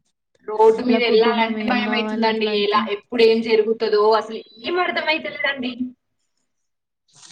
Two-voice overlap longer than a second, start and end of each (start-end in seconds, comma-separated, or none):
0.9-2.8